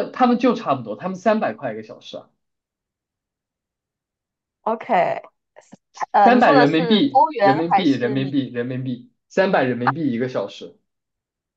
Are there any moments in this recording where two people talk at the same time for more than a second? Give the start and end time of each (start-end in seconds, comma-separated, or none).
6.2-8.4